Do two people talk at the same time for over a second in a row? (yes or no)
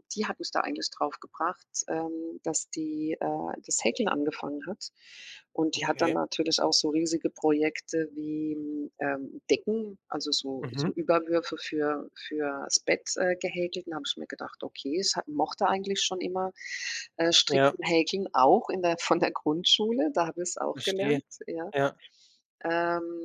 no